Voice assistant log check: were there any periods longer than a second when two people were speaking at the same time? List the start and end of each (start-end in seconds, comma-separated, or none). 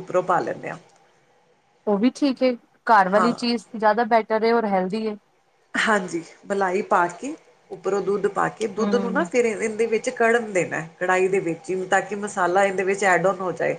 none